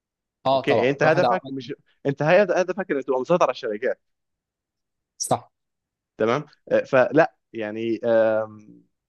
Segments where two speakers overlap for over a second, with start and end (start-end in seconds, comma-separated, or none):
0.5-1.7